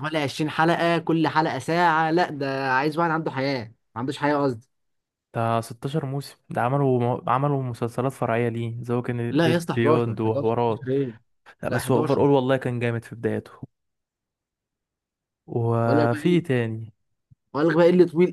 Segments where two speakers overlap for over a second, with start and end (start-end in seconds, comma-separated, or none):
9.3-10.9